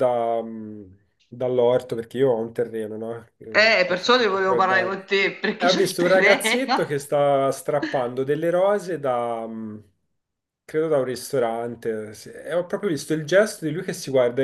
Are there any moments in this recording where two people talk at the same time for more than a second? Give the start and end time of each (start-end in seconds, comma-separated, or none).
3.5-4.9, 5.6-7.1